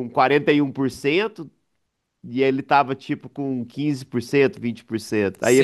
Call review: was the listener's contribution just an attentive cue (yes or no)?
no